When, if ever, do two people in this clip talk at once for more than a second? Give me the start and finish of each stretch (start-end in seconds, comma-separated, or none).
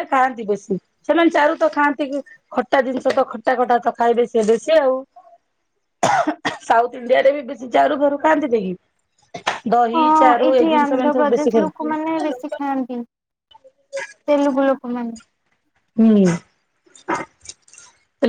9.9-11.9